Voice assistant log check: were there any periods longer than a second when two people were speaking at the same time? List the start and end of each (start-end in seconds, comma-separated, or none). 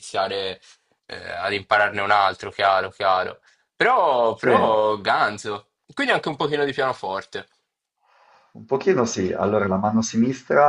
none